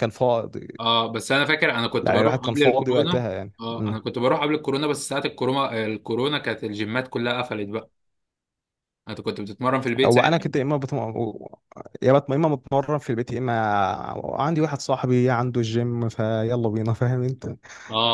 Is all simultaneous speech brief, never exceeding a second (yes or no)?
no